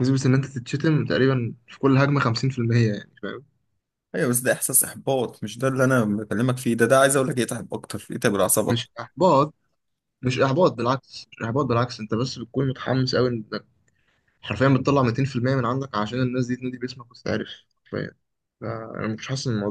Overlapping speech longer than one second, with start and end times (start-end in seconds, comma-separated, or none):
none